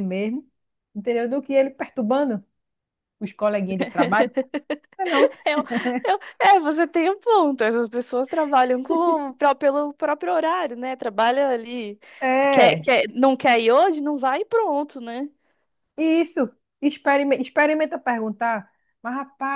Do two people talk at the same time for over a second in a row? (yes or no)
no